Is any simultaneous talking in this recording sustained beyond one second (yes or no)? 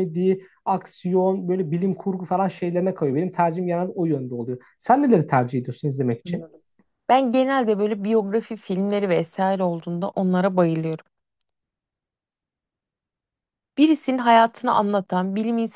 no